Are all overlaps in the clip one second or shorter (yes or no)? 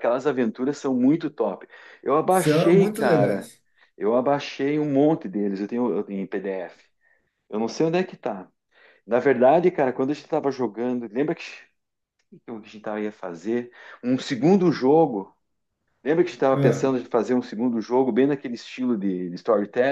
no